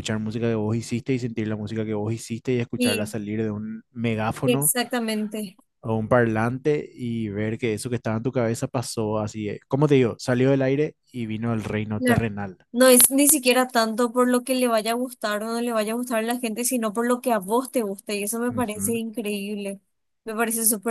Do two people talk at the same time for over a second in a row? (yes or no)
no